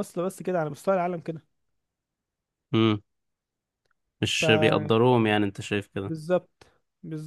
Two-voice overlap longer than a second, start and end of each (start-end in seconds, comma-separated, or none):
none